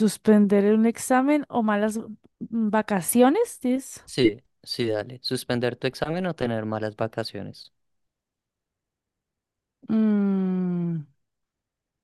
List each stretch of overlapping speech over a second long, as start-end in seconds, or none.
none